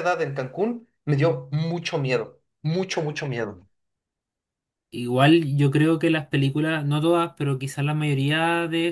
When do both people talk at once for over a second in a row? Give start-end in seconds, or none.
none